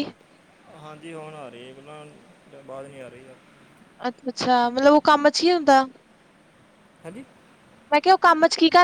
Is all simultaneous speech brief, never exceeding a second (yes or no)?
yes